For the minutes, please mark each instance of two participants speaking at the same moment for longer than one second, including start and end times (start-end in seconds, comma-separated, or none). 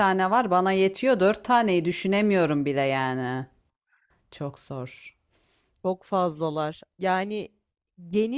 none